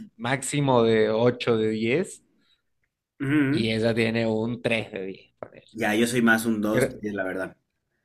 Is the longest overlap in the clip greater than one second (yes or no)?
no